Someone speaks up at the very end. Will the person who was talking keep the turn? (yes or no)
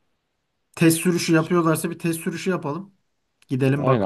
no